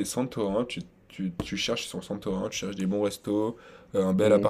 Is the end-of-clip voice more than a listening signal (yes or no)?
no